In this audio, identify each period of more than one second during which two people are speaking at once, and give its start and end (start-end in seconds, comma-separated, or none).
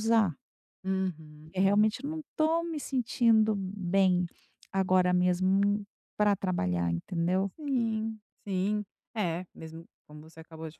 none